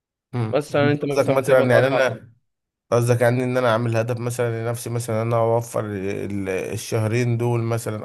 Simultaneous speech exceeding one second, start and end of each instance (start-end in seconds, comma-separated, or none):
0.5-2.2